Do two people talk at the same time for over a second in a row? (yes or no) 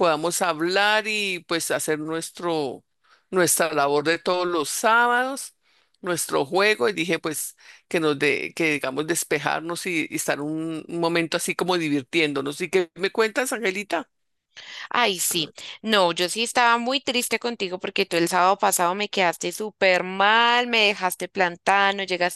no